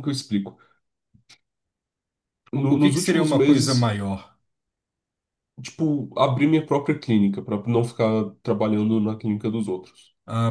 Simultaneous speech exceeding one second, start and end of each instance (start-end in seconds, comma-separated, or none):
2.5-3.9